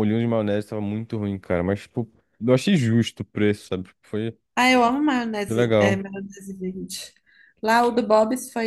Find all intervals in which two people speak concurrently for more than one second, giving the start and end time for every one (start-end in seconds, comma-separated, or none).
none